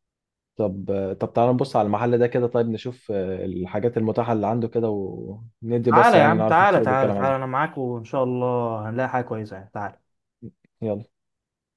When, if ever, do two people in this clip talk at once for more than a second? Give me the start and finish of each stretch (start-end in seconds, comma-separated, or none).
5.9-7.5